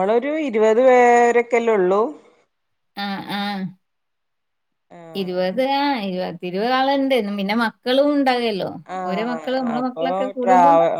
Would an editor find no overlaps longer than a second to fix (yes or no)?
yes